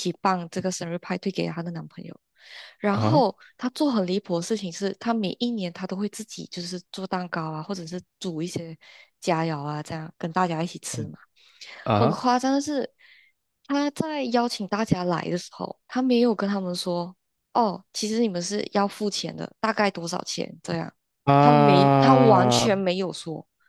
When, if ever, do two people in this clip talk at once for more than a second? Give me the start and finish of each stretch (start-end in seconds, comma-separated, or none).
21.4-22.7